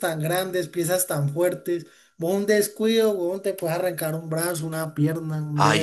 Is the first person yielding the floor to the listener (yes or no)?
yes